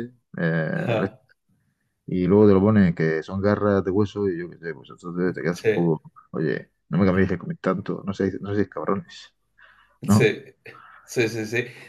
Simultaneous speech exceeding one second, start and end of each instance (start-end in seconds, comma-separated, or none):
none